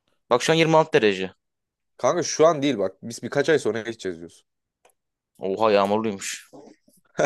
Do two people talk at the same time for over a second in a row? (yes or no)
no